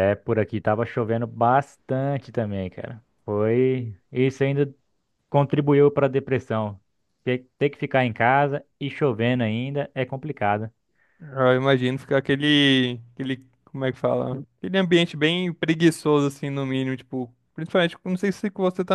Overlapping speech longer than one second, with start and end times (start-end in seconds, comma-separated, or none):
none